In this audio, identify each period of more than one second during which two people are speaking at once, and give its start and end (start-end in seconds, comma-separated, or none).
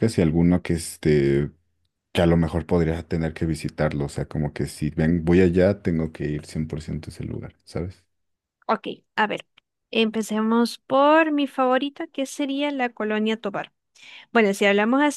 none